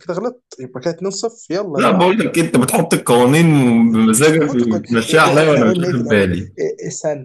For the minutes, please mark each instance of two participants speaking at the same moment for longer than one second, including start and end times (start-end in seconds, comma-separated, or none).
4.2-6.5